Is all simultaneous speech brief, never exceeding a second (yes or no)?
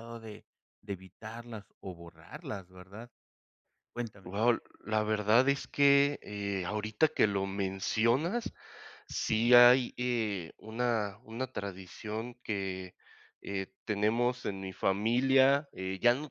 yes